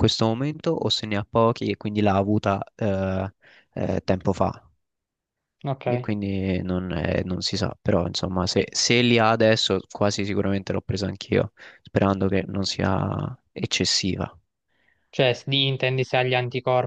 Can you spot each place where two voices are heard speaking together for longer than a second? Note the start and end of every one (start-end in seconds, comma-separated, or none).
none